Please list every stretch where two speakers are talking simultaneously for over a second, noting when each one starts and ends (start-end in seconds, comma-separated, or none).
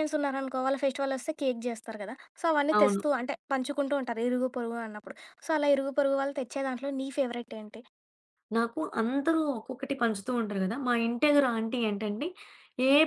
none